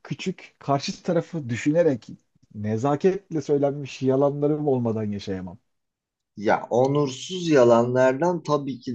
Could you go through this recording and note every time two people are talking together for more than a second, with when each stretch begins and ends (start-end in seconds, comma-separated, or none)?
none